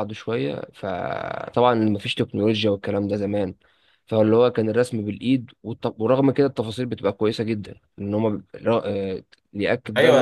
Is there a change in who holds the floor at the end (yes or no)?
yes